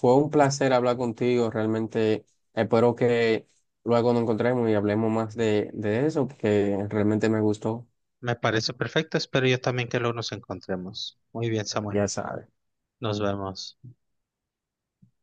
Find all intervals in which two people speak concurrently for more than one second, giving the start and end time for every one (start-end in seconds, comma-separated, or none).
none